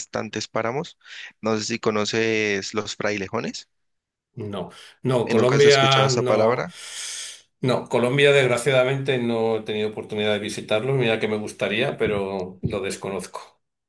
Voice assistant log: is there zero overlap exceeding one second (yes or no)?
no